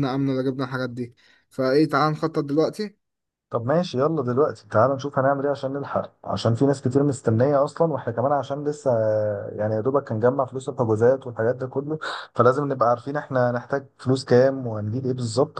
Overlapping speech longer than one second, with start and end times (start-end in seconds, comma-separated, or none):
none